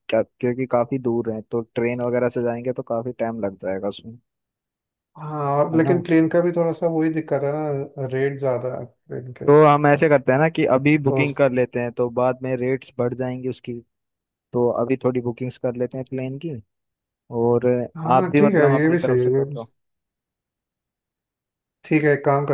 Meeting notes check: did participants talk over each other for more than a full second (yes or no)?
yes